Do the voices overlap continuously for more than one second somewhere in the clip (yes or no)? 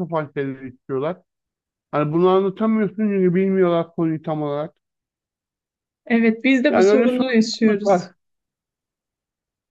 yes